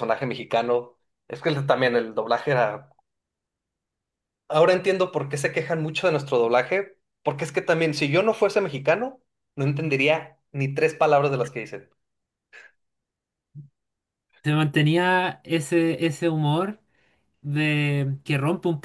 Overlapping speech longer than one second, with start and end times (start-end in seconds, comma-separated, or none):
none